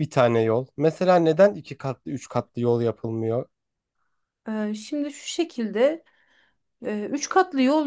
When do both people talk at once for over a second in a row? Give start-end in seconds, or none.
none